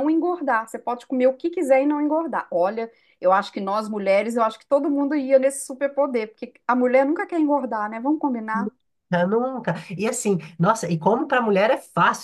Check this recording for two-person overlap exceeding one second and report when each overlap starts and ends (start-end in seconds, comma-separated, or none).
none